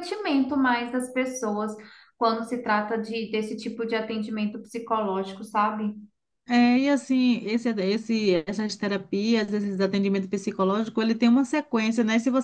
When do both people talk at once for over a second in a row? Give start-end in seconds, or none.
none